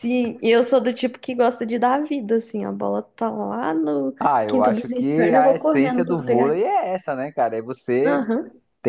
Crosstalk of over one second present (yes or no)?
yes